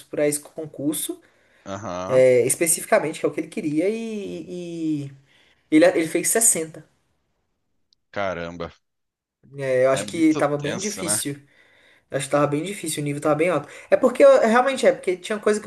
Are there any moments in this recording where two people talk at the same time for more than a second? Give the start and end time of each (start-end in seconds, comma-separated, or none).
9.9-11.2